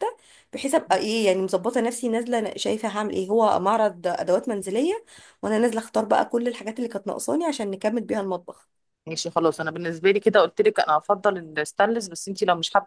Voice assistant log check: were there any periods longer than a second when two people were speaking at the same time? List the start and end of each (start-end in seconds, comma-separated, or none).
none